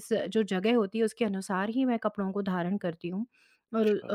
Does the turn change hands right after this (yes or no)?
no